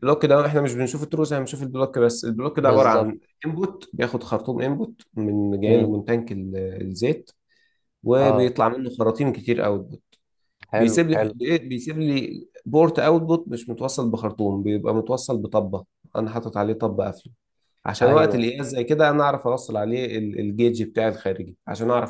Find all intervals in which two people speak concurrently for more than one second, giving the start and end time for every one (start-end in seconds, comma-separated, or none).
none